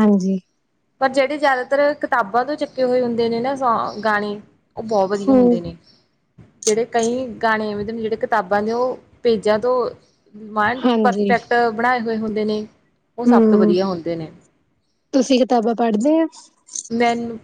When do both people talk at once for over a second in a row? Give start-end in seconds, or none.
none